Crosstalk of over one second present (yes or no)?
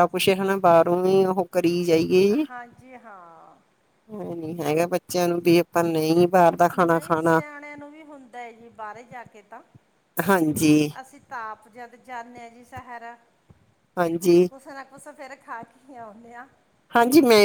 no